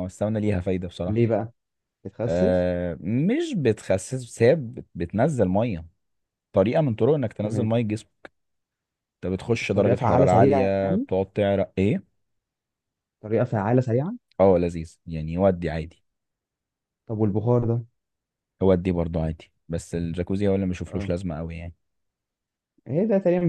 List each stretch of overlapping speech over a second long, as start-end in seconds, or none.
9.6-11.1